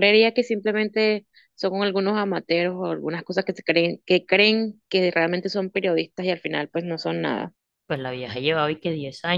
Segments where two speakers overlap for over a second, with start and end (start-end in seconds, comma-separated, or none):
none